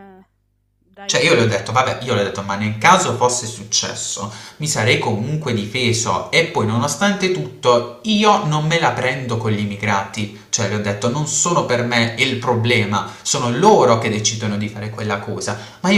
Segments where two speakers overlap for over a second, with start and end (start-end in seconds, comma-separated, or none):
1.1-2.4